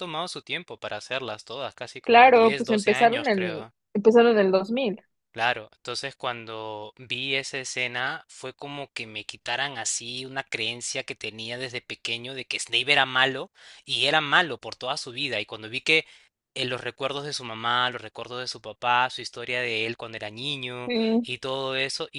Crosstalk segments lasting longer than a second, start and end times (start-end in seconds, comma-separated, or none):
2.0-3.7